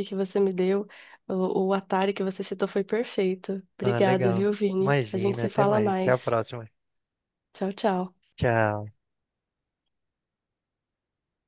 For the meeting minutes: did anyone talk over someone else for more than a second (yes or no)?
yes